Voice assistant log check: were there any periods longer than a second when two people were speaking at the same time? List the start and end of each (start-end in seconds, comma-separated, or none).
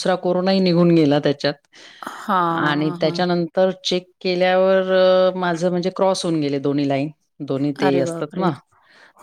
none